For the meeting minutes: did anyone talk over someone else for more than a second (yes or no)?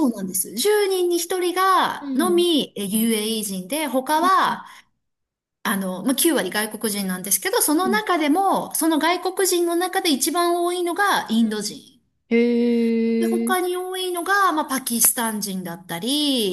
no